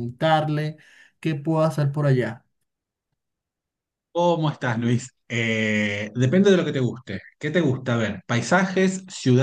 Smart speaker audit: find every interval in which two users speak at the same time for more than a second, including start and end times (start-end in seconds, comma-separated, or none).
none